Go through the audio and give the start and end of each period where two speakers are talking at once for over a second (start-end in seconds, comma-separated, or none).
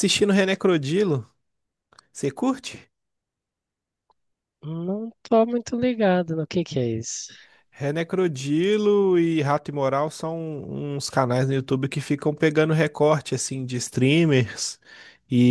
none